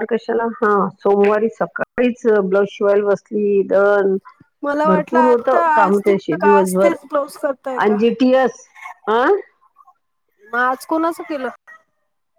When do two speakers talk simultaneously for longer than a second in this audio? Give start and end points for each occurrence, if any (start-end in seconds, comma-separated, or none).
4.9-7.0